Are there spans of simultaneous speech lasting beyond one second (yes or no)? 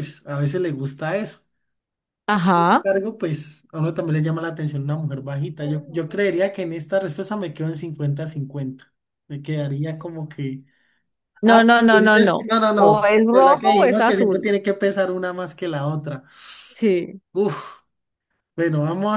yes